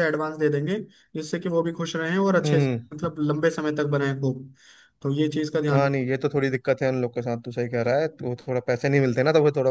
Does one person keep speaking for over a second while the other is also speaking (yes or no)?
no